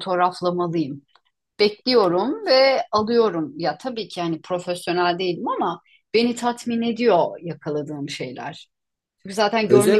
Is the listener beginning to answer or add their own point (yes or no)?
yes